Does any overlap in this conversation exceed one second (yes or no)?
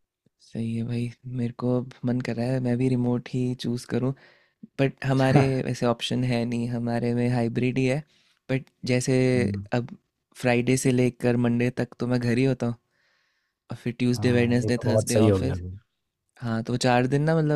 yes